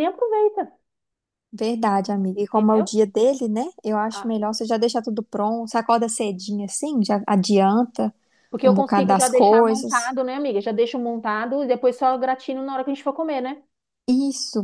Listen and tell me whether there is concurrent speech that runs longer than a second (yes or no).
yes